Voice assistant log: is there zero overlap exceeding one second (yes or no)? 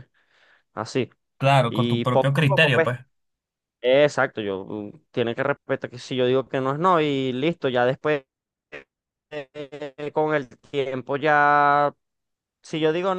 no